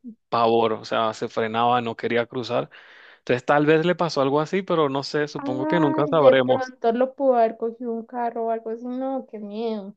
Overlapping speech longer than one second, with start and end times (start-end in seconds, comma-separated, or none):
5.4-6.7